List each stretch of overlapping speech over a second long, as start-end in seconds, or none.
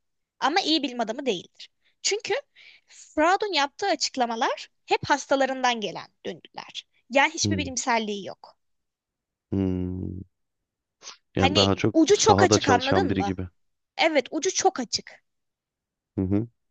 11.4-13.3